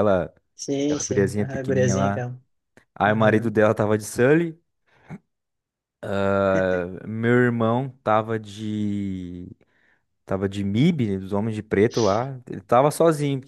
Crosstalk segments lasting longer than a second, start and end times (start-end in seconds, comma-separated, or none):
0.8-2.2